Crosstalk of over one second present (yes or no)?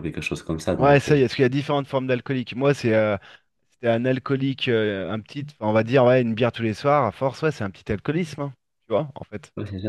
no